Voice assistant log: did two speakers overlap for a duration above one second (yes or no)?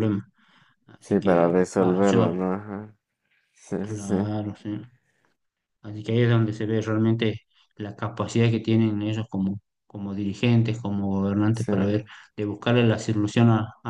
yes